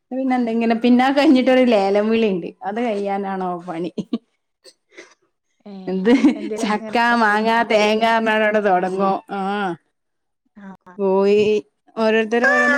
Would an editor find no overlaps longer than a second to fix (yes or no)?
no